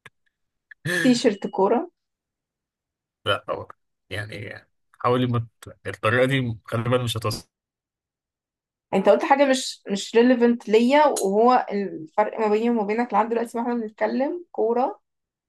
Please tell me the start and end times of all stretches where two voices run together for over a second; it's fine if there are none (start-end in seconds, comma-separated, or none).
none